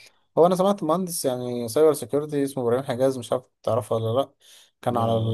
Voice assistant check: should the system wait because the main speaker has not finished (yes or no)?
yes